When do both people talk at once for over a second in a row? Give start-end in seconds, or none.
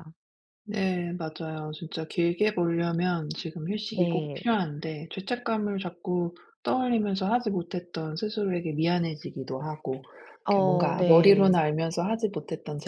10.4-11.7